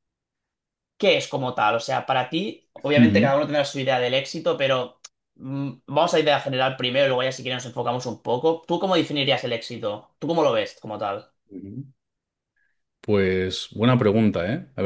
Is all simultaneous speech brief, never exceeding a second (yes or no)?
yes